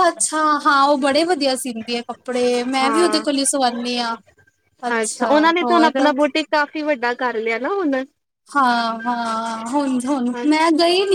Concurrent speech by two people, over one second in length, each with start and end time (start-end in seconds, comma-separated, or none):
none